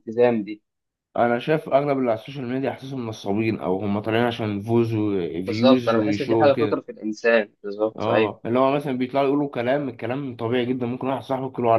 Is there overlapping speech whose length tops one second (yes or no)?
yes